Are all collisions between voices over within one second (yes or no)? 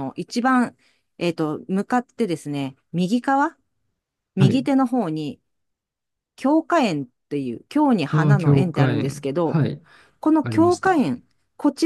no